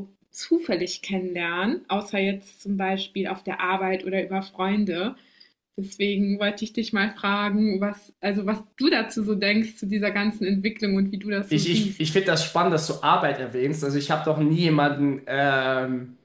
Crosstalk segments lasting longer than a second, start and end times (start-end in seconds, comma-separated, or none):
none